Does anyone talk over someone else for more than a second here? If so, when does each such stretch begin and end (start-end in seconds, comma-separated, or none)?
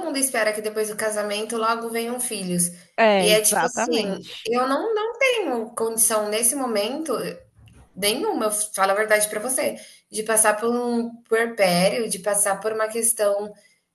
3.2-4.5